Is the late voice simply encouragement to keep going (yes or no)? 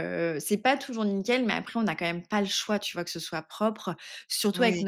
yes